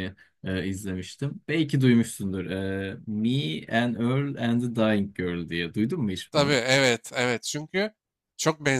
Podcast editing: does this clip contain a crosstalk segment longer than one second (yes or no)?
no